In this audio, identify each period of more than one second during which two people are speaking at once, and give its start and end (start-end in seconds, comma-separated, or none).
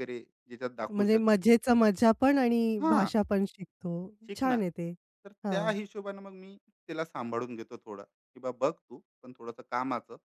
none